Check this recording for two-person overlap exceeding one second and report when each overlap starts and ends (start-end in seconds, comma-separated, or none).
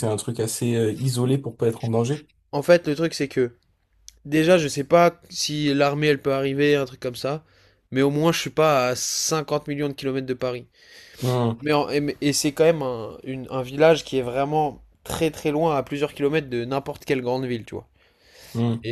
none